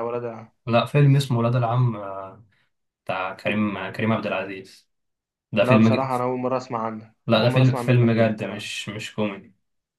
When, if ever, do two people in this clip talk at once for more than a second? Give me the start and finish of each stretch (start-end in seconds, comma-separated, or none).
7.3-8.6